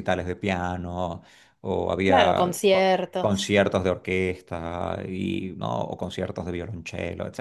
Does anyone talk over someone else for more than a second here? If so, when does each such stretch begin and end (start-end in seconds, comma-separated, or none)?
2.0-3.6